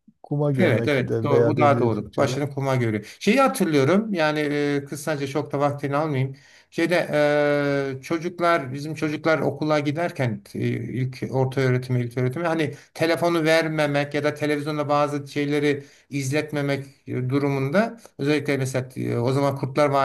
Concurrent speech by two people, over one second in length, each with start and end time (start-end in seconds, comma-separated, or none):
0.6-2.3